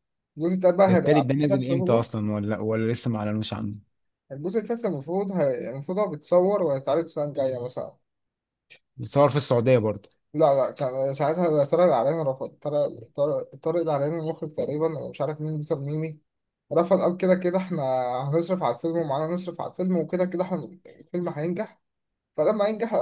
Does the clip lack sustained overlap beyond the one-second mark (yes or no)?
no